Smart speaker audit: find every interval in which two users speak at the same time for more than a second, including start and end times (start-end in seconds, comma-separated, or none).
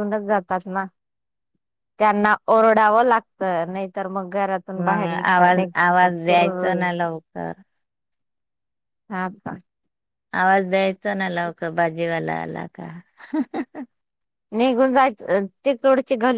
4.8-6.8